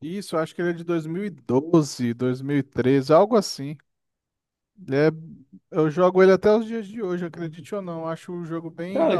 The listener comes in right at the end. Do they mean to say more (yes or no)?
yes